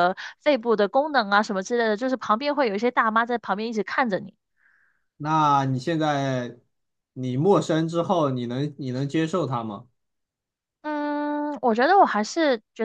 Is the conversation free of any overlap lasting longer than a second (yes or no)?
yes